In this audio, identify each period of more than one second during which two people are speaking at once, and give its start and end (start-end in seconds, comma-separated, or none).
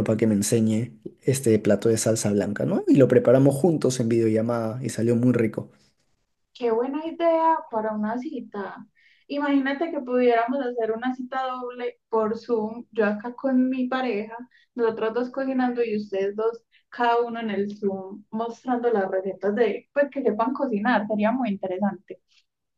none